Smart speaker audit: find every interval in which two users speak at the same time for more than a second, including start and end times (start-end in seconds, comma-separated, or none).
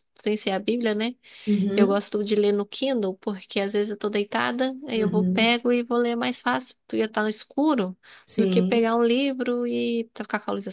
none